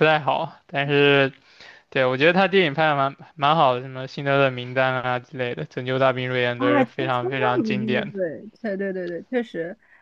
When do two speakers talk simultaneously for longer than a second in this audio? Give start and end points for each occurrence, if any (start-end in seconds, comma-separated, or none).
6.6-8.2